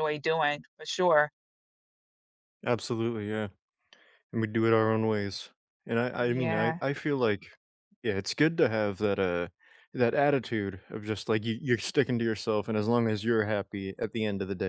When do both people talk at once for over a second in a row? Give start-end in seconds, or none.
none